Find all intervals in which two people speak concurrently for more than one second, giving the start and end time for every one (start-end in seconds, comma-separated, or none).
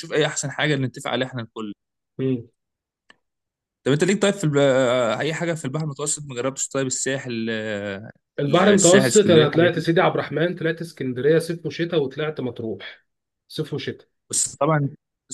8.4-9.9